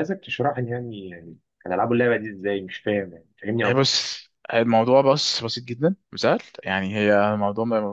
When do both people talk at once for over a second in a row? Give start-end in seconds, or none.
none